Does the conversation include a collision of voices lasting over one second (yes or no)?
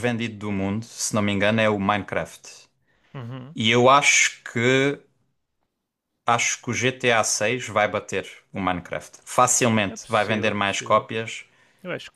yes